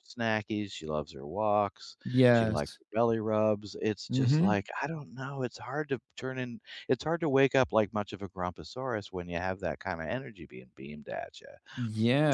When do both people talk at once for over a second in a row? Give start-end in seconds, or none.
none